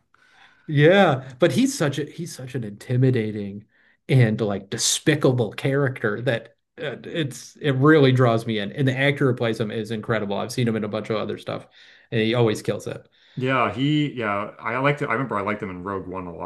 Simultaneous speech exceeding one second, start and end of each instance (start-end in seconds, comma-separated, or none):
none